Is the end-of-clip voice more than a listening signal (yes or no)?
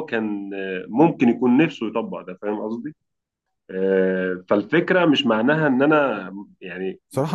yes